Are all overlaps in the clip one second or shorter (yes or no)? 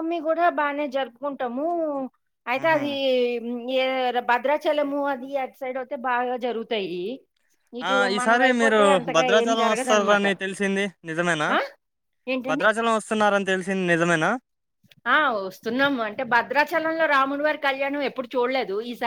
no